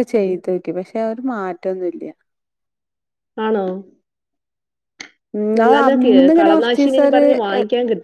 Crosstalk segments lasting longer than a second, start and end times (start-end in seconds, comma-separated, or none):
5.6-7.2